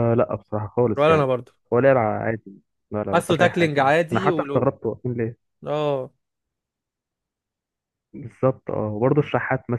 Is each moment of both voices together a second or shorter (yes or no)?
no